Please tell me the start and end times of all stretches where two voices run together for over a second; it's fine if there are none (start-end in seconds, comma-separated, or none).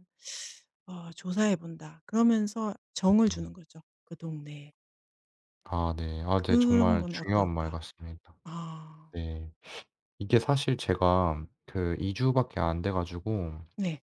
6.3-7.8